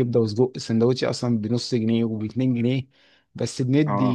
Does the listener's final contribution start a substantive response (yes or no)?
no